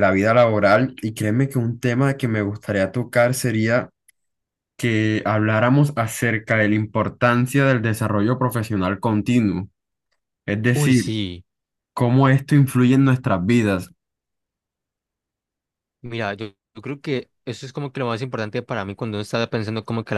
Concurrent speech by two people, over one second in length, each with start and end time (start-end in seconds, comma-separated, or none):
none